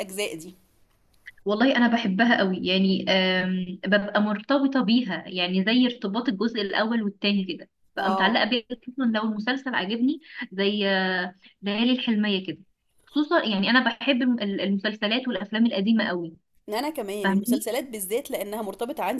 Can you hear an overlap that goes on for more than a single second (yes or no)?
no